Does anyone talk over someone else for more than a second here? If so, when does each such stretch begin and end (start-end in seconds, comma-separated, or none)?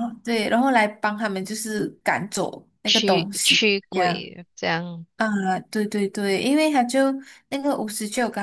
2.9-4.3